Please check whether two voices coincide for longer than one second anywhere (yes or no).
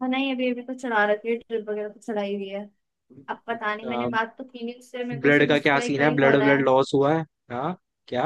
yes